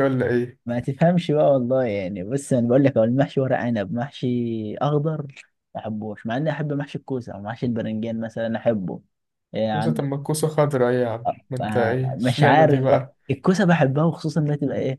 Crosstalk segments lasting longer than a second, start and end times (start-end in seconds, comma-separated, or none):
11.6-13.1